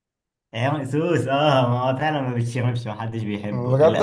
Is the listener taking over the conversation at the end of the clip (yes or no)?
yes